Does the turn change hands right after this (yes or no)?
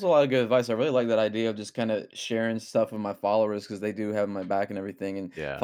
no